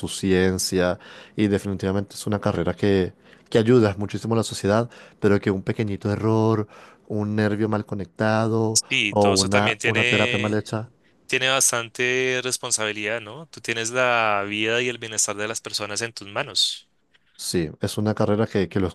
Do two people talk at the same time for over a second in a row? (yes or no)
yes